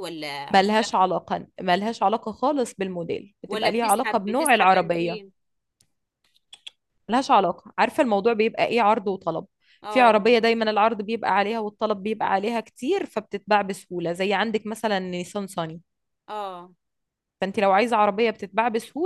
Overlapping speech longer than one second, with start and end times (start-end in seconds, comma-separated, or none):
3.5-5.2